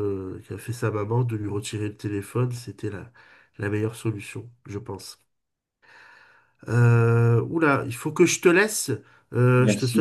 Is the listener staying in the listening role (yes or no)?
yes